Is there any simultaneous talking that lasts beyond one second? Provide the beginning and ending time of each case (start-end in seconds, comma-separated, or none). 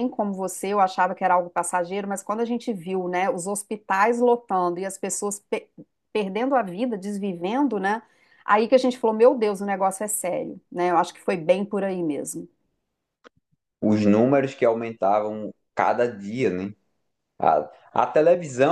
none